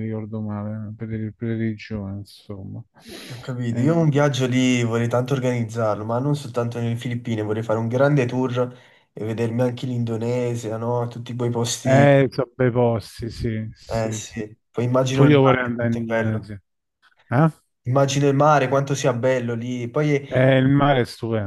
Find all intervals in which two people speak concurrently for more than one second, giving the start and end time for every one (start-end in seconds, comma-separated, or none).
15.1-16.5